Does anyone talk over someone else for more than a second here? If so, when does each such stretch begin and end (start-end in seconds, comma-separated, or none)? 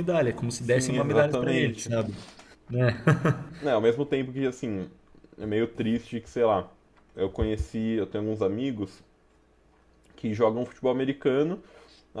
0.6-1.9